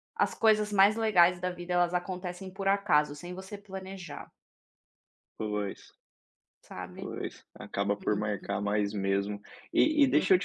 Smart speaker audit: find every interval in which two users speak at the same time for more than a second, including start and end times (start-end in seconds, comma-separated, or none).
none